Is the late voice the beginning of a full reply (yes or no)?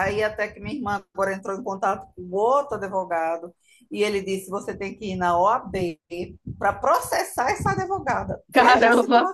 yes